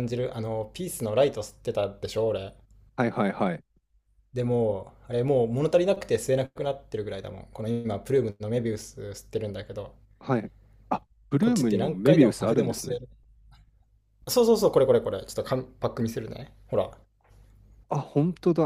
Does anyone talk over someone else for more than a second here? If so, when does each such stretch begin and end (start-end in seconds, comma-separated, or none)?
11.4-13.0